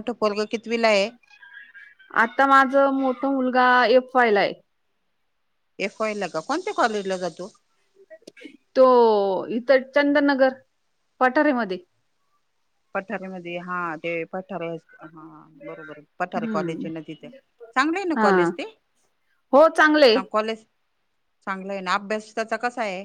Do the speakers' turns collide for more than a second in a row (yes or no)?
no